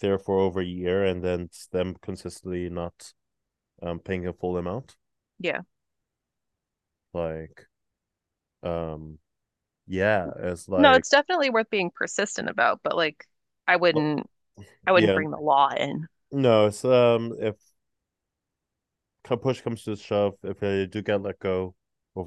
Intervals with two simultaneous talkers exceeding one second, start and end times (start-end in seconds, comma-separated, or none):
none